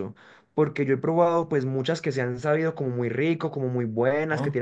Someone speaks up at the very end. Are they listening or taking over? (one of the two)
listening